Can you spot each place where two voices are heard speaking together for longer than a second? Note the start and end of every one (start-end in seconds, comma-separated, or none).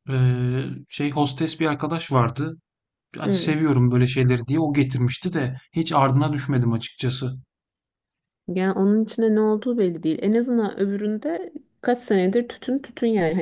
none